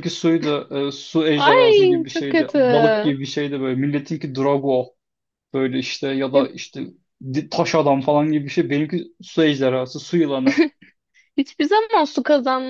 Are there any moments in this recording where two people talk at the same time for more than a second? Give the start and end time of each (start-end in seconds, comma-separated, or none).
1.4-2.6